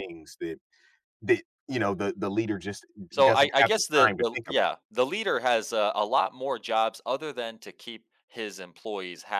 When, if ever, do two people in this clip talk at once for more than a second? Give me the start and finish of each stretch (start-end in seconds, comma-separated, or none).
3.2-4.8